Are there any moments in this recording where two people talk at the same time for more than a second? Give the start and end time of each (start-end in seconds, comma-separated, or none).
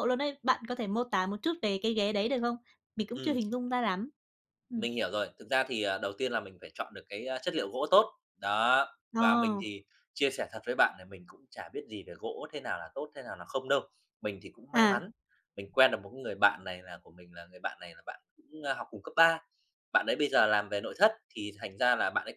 none